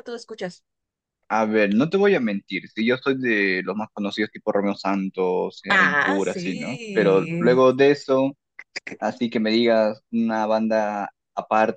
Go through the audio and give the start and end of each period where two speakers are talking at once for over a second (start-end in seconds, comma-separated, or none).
5.7-7.7